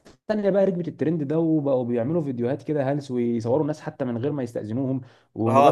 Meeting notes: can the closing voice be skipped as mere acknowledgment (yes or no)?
no